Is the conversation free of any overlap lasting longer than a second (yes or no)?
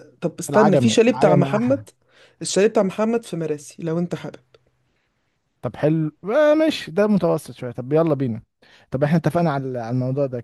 no